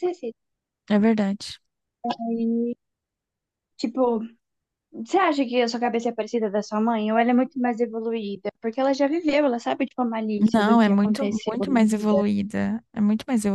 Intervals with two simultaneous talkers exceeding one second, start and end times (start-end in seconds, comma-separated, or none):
10.5-12.2